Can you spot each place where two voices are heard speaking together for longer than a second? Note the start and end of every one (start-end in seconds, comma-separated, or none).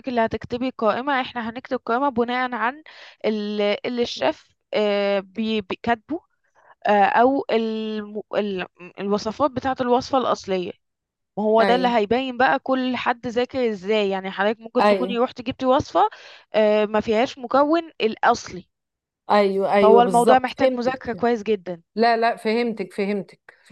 19.8-21.2